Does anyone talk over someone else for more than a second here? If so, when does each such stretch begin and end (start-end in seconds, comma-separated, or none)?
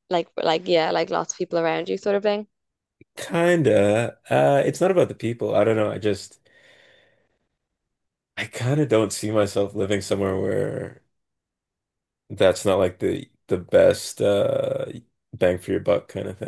none